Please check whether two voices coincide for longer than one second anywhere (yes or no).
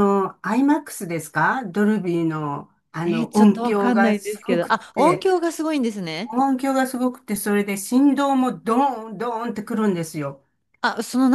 yes